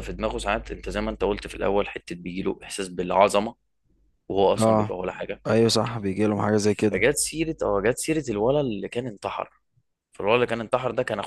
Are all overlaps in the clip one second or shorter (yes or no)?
yes